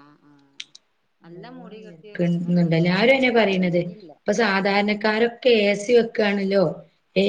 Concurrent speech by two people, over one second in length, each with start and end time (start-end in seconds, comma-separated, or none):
1.3-2.7